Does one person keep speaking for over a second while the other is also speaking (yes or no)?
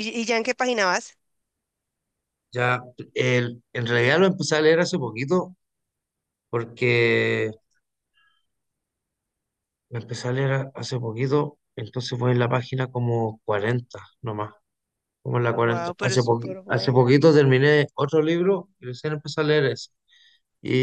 yes